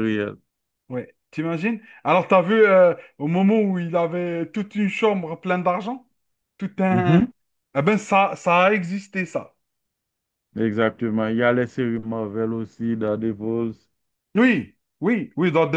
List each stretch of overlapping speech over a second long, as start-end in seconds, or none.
none